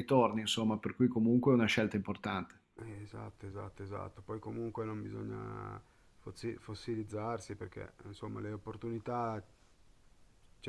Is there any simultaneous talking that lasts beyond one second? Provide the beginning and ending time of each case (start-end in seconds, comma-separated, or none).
none